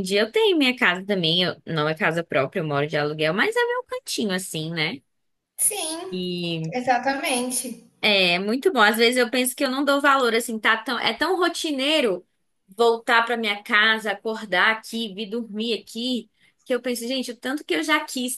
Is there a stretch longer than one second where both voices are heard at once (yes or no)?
no